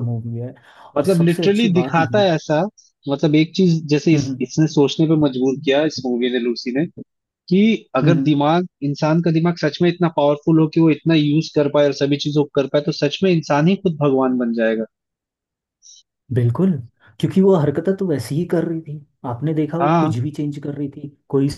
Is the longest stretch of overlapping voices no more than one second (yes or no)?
no